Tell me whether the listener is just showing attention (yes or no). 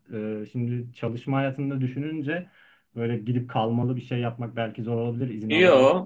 no